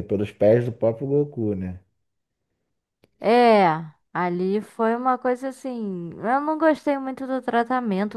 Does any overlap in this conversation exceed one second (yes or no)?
no